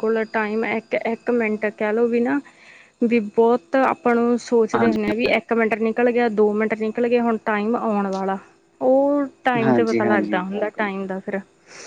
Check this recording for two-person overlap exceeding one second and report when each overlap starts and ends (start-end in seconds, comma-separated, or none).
9.6-10.9